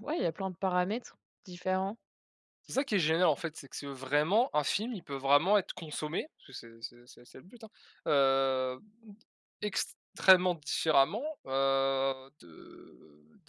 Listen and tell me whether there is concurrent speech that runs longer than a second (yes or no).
no